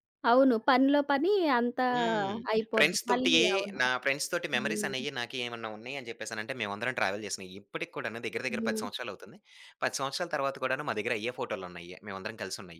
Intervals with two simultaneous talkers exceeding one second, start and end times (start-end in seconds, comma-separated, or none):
none